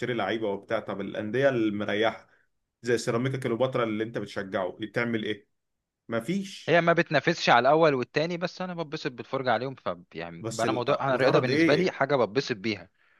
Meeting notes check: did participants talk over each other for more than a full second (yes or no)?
yes